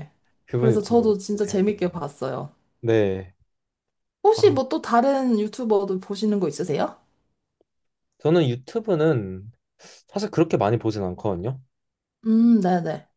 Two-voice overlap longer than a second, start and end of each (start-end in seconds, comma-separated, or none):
0.5-2.0